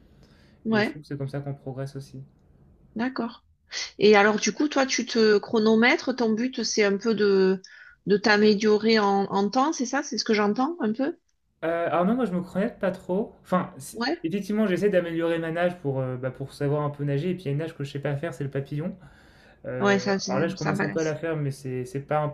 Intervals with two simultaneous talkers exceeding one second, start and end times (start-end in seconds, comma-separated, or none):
19.8-21.2